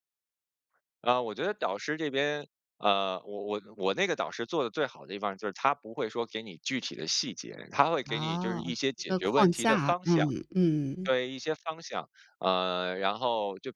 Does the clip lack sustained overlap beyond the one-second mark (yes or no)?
no